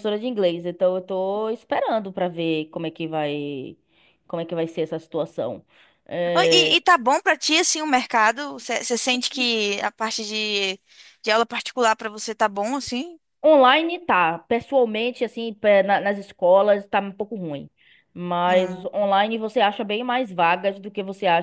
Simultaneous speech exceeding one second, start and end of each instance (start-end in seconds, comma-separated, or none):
none